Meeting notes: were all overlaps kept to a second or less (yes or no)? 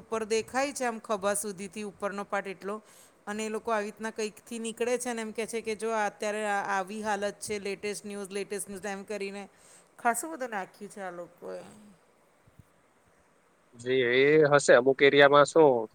yes